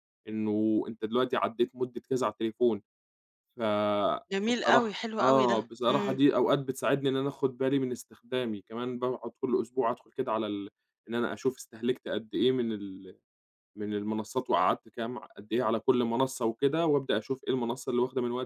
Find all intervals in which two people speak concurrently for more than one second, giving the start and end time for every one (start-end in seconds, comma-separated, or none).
4.5-6.2